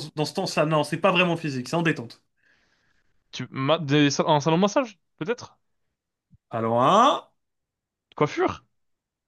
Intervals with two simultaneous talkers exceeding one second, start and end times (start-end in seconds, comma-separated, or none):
none